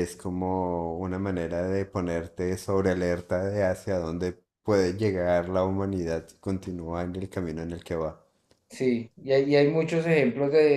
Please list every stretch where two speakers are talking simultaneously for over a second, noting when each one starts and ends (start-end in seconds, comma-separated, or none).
none